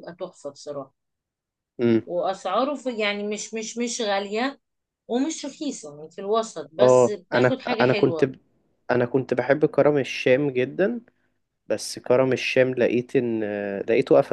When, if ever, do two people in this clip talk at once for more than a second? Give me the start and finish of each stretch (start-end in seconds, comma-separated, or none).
6.8-8.3